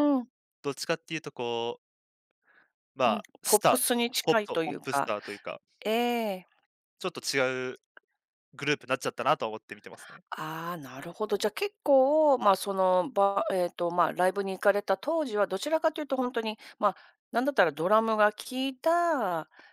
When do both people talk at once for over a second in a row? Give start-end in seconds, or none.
3.0-5.1